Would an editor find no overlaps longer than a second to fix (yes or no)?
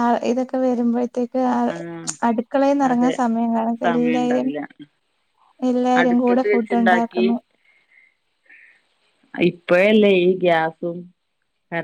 no